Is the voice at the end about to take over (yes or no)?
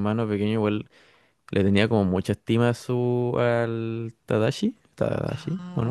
yes